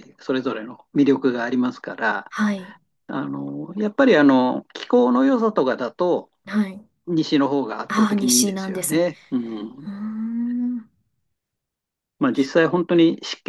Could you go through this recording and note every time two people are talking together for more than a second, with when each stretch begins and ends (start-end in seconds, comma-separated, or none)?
7.9-9.1